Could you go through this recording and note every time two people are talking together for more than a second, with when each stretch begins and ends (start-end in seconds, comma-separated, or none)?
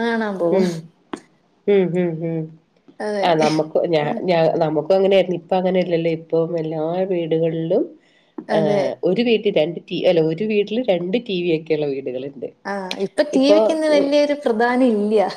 none